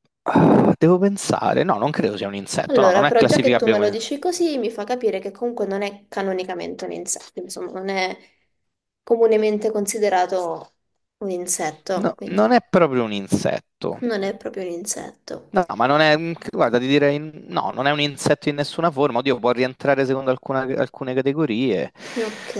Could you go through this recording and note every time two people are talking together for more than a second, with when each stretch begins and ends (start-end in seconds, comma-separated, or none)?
2.6-4.0